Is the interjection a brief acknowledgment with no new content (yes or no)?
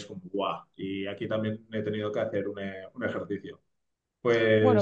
no